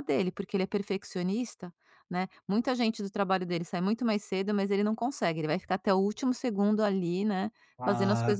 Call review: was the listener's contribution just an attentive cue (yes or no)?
no